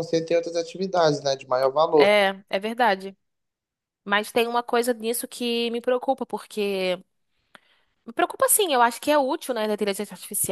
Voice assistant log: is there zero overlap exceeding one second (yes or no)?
yes